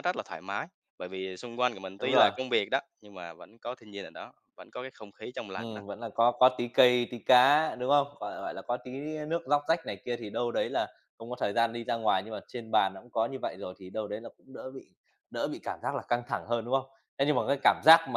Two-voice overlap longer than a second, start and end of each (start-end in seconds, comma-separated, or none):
none